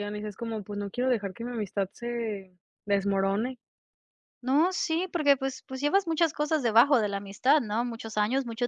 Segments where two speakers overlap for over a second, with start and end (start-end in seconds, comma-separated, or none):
none